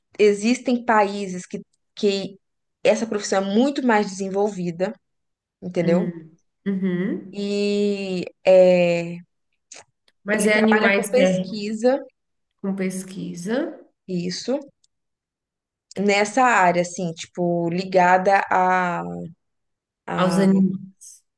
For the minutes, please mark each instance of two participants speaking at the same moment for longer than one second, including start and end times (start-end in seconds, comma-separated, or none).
10.3-11.6